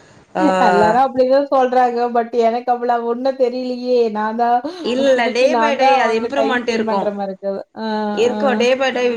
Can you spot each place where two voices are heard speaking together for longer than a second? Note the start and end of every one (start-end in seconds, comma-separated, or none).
5.0-7.1